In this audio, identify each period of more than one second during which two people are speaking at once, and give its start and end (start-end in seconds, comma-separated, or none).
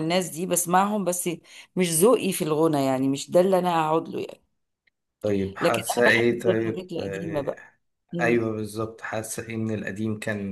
5.6-7.6